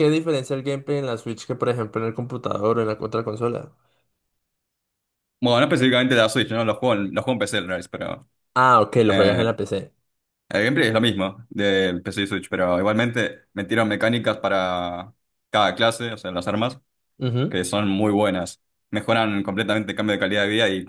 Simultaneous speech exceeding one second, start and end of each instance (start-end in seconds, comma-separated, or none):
none